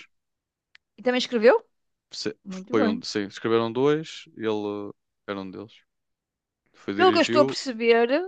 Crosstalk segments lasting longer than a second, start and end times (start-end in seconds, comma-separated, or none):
none